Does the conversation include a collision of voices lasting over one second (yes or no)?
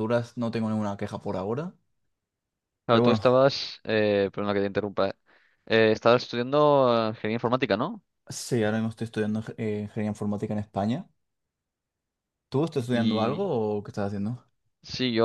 no